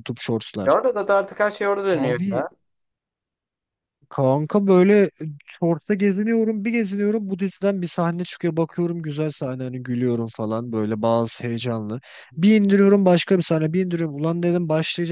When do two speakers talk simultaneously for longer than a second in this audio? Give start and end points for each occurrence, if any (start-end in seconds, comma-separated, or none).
none